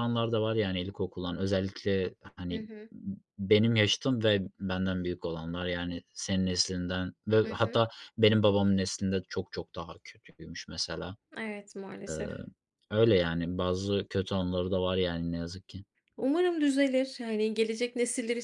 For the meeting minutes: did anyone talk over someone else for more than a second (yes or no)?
no